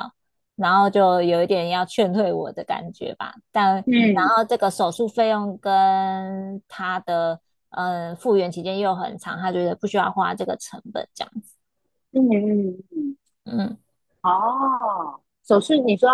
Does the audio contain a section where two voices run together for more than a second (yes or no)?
no